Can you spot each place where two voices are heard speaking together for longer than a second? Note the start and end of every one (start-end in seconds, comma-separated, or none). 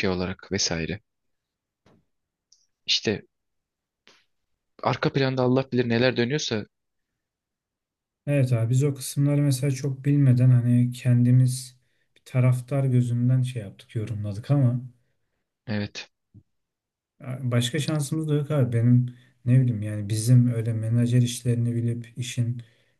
none